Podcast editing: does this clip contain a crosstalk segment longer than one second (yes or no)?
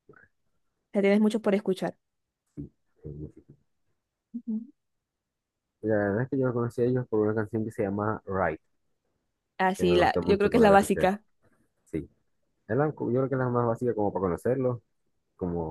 yes